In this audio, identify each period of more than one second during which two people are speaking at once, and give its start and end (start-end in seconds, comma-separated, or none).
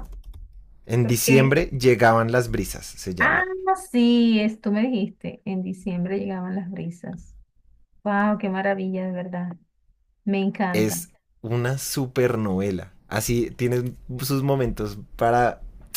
none